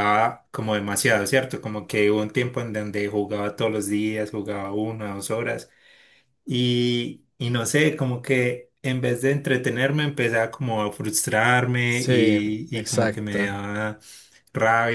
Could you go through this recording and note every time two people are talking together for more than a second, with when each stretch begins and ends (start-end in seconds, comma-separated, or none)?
11.9-13.5